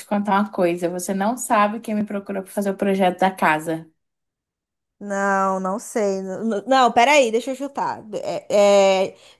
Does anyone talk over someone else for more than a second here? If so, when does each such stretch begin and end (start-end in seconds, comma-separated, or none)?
none